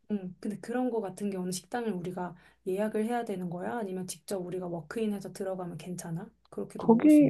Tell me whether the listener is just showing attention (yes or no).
no